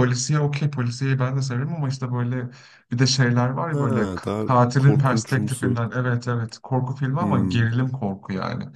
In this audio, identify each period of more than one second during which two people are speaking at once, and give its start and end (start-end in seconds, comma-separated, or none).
3.7-5.8